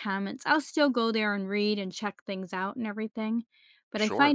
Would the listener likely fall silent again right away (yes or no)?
yes